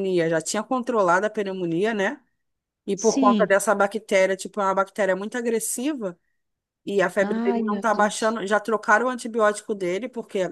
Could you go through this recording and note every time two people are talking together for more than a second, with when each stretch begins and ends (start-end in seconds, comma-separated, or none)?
7.2-8.4